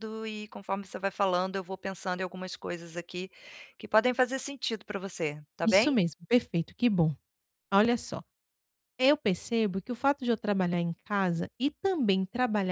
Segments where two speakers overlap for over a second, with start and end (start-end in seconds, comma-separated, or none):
none